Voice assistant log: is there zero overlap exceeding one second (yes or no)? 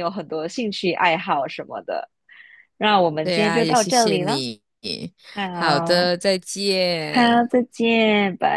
no